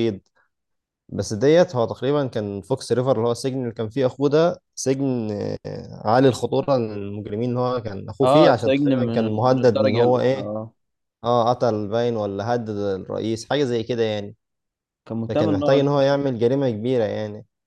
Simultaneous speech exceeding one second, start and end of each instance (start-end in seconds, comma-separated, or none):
8.2-10.5